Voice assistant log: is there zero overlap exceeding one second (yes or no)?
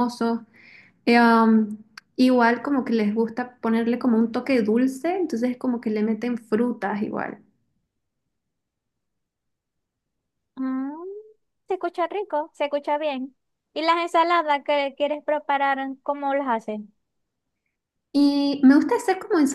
yes